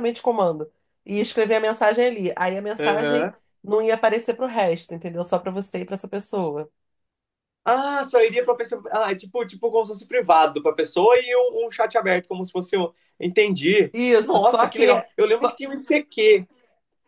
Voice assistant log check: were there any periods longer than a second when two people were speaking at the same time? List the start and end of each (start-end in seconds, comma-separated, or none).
13.9-15.6